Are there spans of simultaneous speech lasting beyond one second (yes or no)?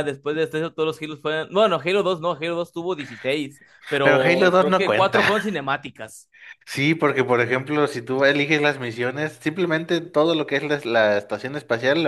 yes